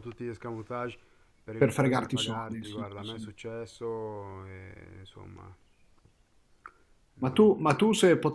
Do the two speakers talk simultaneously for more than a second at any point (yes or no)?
yes